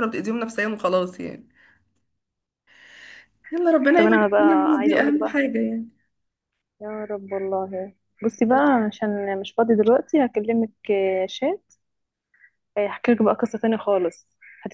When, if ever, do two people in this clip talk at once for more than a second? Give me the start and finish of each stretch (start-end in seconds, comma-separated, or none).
4.0-5.4